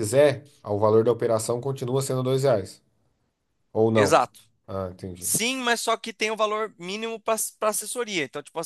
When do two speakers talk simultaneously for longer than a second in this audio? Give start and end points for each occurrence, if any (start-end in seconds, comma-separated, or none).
none